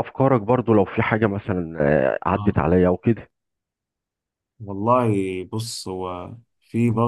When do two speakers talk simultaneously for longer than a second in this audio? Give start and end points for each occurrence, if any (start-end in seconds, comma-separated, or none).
none